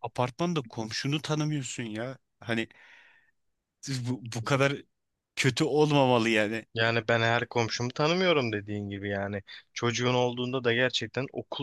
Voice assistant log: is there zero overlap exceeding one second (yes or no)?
yes